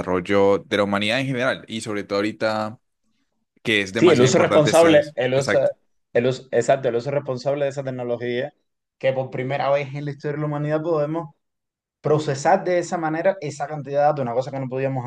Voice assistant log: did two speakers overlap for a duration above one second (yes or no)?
yes